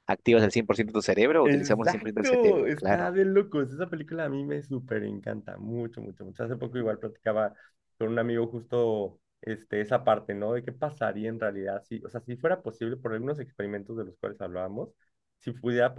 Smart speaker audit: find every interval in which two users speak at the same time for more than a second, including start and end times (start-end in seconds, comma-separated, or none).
1.4-3.1